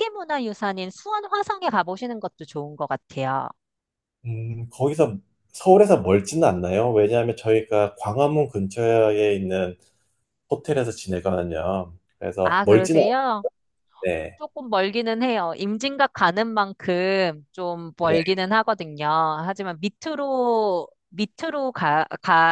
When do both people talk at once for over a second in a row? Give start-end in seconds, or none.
none